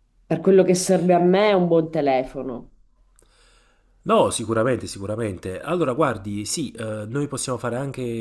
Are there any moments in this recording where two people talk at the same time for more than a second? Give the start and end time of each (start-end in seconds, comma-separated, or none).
none